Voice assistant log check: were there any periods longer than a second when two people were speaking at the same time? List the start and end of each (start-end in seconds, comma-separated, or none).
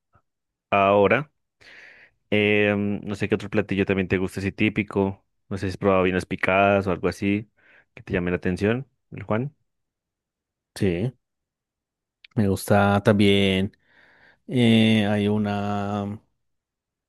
none